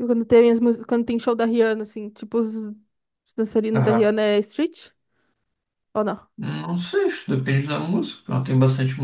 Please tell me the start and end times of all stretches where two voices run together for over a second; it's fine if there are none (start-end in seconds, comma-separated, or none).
none